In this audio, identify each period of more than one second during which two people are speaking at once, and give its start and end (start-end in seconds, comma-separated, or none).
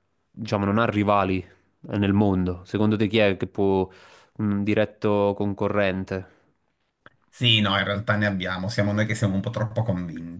none